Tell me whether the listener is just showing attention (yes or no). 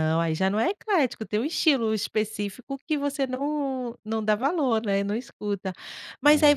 yes